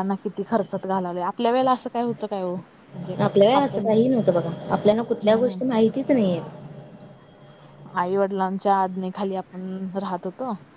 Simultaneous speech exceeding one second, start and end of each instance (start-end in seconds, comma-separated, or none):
none